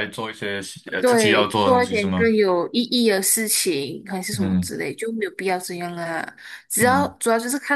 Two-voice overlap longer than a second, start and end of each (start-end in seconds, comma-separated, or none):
1.0-2.3